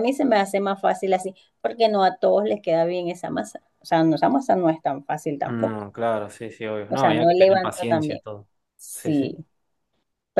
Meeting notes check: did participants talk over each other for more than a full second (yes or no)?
yes